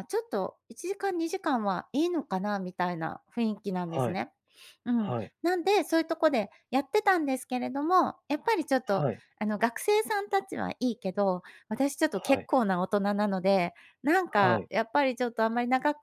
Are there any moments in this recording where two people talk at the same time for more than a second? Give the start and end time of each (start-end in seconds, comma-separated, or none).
none